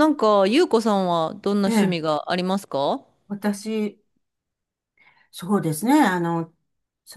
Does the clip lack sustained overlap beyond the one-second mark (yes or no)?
yes